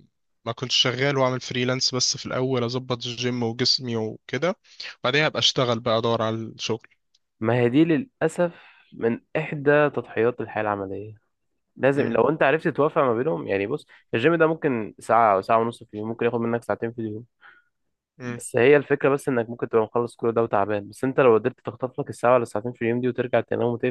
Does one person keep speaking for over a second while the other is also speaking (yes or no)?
no